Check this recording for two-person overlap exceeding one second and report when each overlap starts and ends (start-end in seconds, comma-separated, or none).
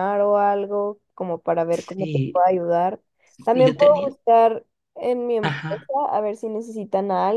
none